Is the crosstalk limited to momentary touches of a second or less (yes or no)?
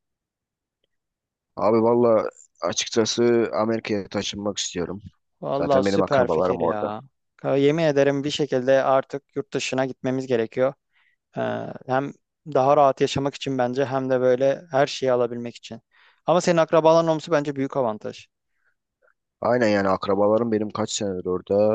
no